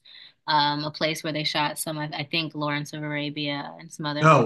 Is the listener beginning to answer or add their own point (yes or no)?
no